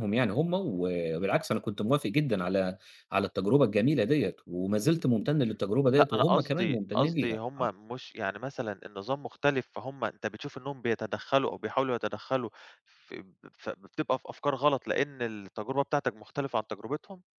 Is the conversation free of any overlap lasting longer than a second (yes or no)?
no